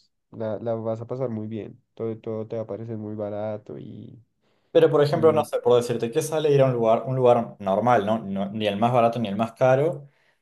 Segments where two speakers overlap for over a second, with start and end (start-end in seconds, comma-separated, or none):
none